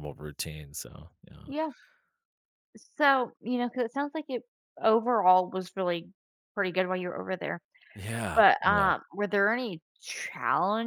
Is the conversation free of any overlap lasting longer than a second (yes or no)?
yes